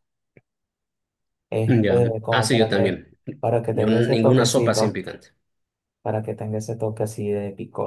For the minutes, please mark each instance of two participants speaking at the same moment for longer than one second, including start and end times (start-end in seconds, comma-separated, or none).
1.7-3.0, 3.7-5.0